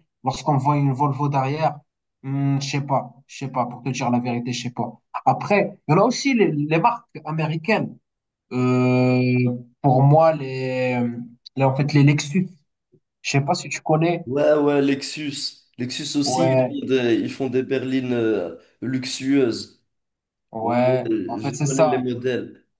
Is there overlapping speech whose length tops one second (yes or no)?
yes